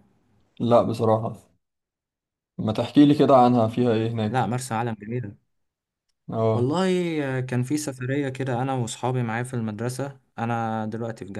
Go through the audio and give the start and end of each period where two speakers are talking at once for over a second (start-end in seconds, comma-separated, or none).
none